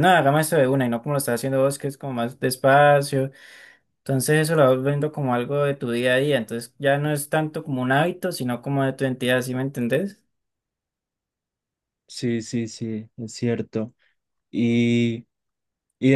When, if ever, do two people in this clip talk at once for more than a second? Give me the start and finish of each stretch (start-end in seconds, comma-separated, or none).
none